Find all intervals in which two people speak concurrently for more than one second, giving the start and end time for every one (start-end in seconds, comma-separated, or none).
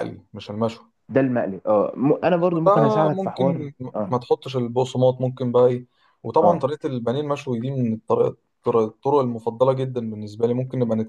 2.2-4.1